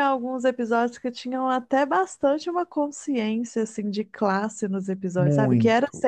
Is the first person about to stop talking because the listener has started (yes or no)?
no